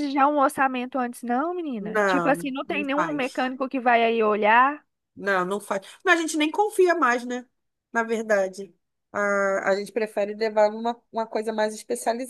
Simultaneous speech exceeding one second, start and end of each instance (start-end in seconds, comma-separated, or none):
1.8-3.5